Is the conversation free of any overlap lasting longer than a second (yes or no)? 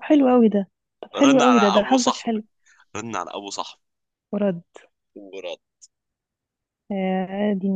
no